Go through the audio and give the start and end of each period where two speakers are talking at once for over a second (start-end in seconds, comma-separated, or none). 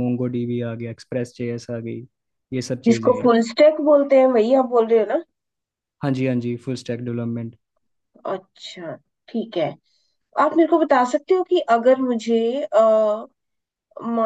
none